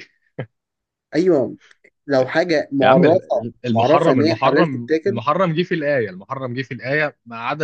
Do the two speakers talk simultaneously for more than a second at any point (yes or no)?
yes